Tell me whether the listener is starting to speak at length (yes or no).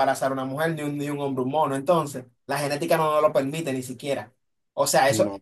no